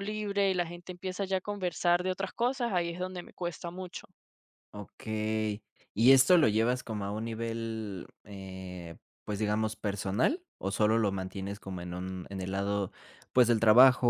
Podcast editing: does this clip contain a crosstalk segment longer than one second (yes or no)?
no